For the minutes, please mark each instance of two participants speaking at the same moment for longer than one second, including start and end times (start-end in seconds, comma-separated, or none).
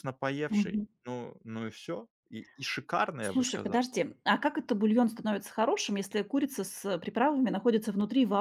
none